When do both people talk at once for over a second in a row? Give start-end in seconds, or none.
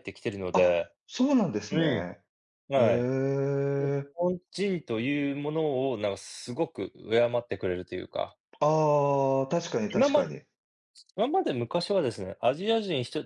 none